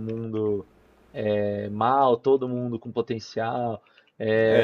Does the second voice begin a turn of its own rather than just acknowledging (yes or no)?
yes